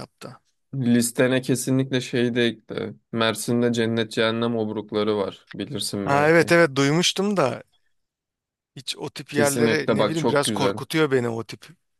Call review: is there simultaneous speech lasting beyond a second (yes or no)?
yes